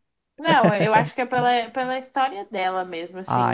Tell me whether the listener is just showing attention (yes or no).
yes